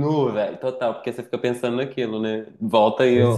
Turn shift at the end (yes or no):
no